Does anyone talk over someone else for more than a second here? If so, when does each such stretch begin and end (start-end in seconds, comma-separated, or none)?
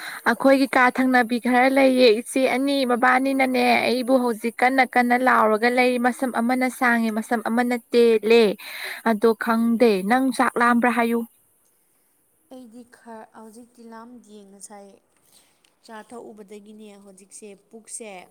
none